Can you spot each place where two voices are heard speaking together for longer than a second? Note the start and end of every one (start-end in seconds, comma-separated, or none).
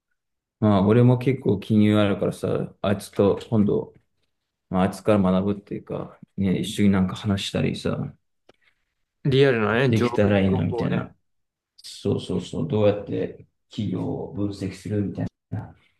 9.9-11.1